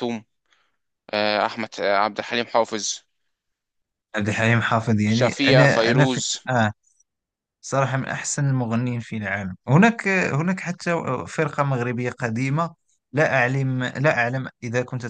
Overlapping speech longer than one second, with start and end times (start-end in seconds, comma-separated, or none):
5.1-6.4